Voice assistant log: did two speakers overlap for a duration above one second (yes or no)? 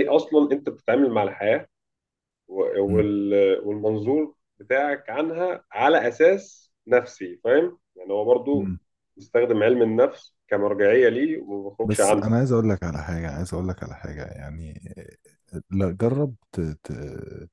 no